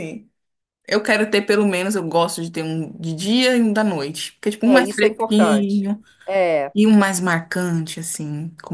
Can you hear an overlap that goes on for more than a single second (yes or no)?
yes